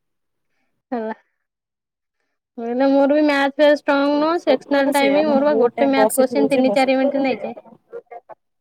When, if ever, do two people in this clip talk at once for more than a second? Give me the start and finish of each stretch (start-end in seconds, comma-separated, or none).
4.4-7.1